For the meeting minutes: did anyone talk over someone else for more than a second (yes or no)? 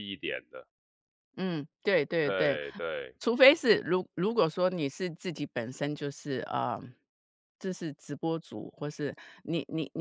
no